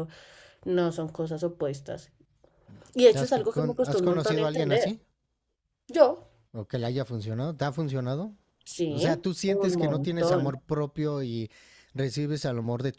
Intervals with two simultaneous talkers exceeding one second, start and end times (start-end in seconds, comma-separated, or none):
3.1-5.0, 8.9-10.6